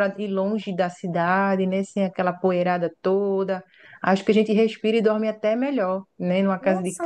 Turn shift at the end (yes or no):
yes